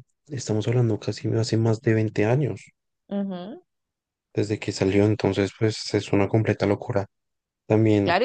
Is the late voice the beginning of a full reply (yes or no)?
yes